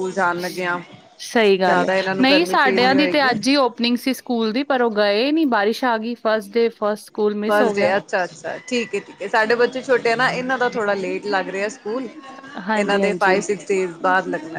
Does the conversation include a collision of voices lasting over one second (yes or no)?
yes